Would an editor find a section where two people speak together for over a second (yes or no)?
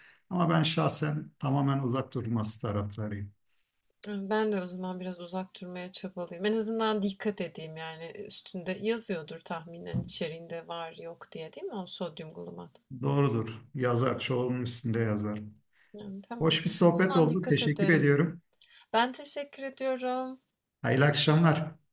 yes